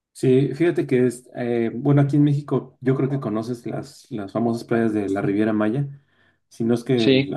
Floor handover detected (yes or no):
no